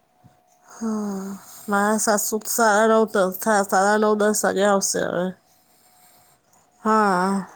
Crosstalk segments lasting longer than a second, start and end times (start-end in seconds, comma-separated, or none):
2.8-4.9